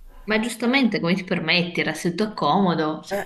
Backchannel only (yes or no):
no